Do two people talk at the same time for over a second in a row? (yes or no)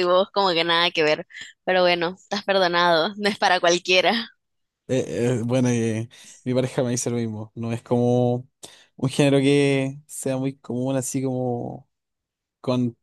no